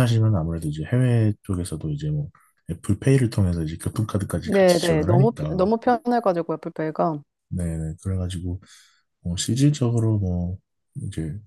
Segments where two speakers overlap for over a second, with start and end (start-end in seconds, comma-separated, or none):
4.4-5.6